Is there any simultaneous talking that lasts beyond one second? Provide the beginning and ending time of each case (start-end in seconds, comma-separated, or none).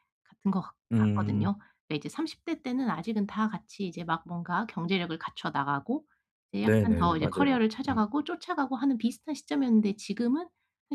6.6-8.1